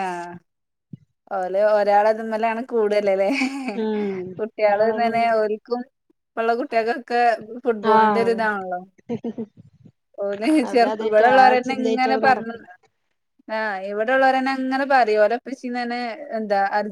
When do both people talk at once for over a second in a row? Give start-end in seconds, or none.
10.7-12.6